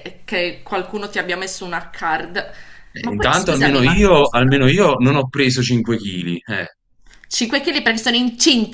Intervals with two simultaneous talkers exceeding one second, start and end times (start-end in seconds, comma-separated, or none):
3.0-4.5